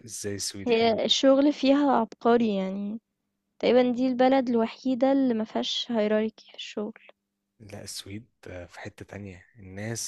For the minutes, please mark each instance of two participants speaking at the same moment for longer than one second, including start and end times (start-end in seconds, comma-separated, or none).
none